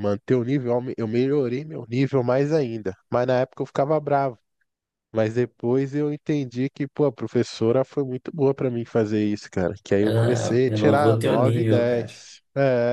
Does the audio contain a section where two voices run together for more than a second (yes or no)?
yes